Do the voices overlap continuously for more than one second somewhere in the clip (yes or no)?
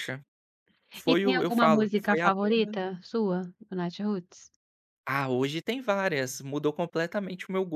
yes